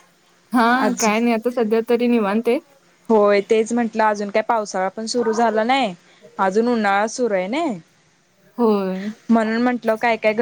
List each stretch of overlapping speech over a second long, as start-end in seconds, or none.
none